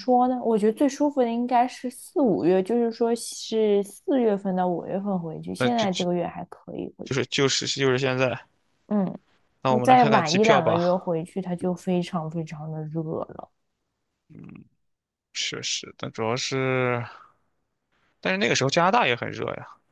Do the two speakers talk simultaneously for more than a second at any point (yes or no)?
yes